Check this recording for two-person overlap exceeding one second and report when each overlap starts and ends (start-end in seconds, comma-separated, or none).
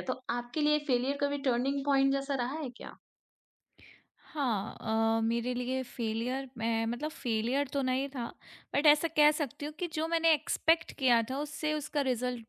none